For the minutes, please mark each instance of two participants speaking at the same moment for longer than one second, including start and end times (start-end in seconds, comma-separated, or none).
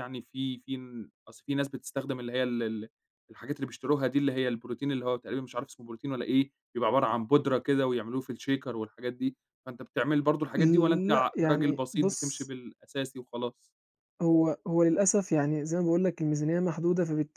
11.1-12.5